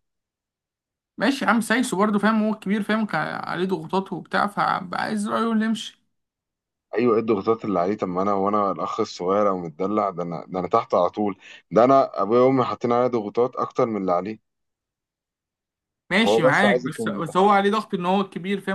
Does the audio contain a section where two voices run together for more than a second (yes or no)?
yes